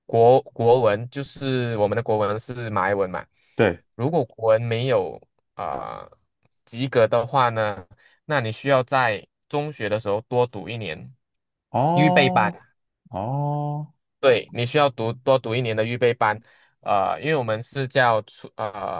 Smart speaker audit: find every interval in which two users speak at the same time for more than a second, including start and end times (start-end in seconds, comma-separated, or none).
none